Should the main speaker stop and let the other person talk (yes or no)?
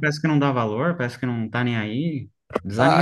yes